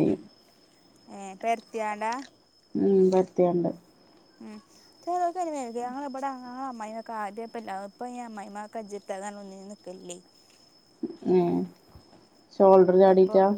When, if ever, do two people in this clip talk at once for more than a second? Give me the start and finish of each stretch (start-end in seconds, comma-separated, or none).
none